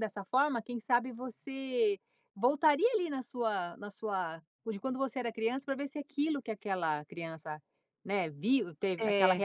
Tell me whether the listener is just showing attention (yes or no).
yes